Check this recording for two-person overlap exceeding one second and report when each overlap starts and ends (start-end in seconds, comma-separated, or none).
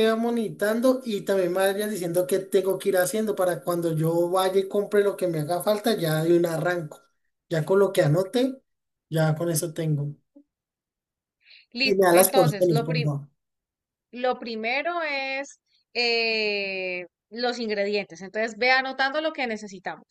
11.8-13.1